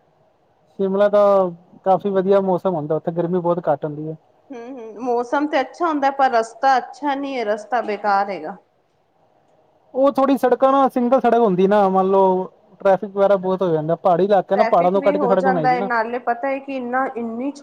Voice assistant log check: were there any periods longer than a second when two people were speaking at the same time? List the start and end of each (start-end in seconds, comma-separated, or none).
14.5-15.9